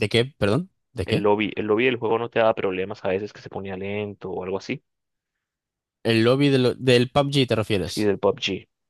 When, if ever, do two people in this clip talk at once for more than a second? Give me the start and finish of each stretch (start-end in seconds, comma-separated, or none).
none